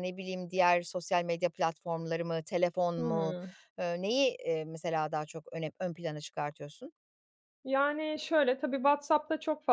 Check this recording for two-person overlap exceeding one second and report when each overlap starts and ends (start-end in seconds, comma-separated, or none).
none